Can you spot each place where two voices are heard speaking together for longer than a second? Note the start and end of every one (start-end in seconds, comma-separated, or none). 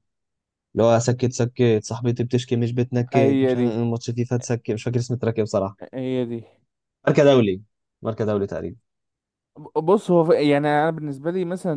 none